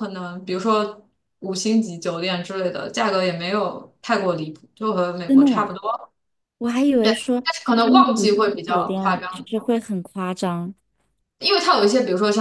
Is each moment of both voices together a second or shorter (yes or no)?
no